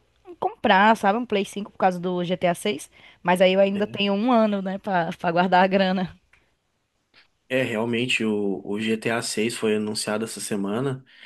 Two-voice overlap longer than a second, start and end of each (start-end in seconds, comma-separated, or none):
none